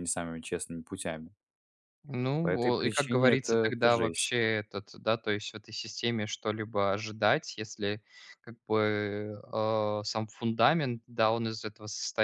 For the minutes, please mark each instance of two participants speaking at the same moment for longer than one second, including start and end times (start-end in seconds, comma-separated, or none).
2.4-4.3